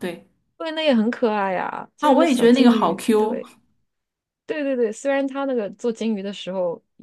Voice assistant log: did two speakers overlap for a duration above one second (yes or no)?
yes